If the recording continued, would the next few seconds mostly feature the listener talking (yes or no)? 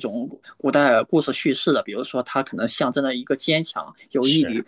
no